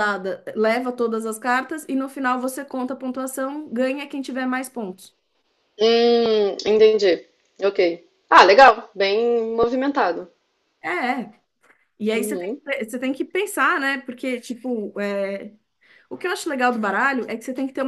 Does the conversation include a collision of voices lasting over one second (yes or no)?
no